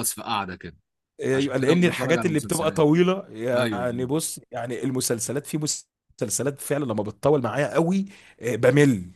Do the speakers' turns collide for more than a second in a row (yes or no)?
yes